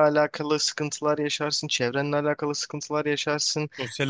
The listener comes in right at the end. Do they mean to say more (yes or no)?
no